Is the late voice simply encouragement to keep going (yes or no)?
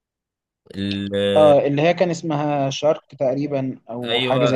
no